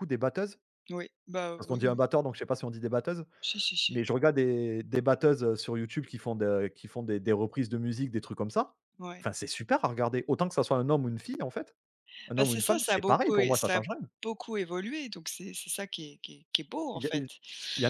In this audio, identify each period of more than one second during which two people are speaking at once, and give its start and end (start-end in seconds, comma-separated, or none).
12.4-13.8